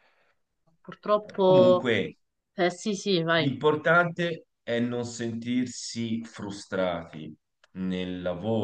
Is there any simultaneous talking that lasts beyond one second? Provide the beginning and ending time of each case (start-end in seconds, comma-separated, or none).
none